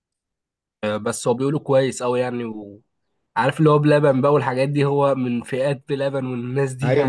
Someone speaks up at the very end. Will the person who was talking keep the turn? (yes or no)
no